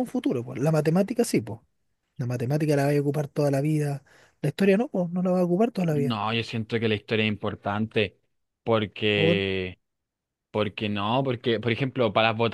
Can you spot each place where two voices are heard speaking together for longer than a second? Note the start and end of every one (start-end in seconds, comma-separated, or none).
none